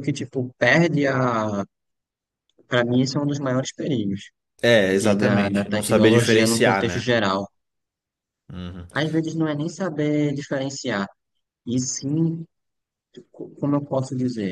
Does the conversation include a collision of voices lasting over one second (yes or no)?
yes